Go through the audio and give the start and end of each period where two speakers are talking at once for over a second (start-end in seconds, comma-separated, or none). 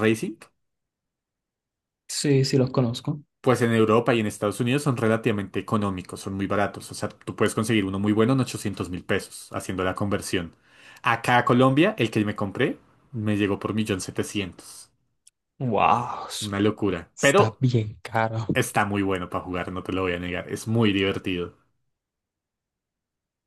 none